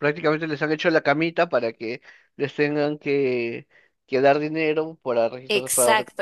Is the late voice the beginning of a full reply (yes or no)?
yes